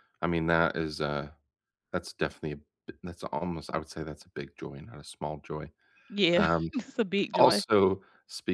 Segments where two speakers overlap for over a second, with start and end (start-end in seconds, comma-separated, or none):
none